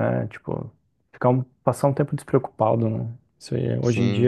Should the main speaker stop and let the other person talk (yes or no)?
no